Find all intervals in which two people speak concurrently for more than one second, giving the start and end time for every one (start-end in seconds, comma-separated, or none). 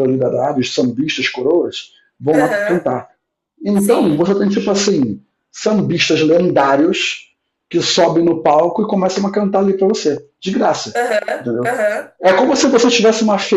none